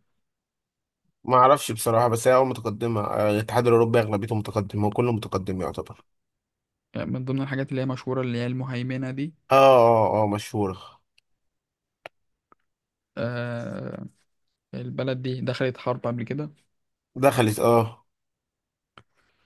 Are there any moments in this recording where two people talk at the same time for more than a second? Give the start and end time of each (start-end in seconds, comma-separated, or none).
none